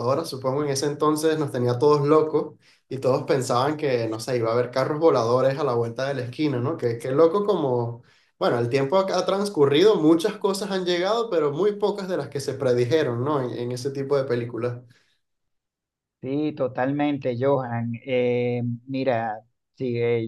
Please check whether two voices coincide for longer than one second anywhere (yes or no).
no